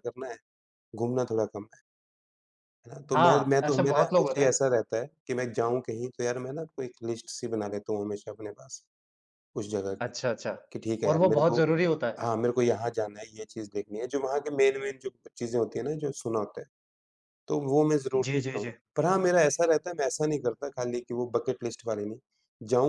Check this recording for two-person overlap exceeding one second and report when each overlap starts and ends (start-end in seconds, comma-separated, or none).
3.1-4.6